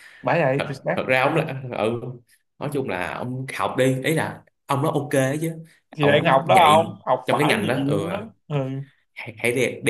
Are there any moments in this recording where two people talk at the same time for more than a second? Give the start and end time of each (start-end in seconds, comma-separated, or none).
6.0-8.0